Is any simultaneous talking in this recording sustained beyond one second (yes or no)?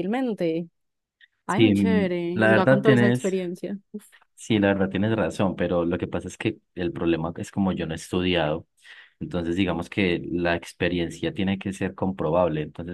yes